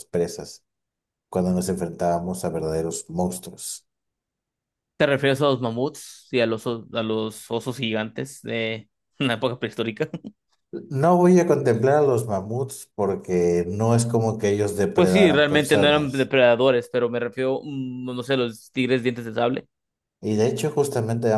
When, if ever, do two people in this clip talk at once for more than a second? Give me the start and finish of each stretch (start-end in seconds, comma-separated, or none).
14.9-16.3